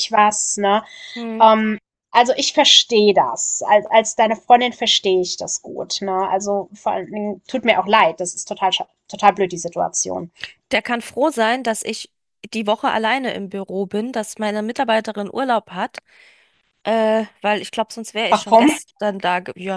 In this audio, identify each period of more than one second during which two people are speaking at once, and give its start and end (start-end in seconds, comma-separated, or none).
none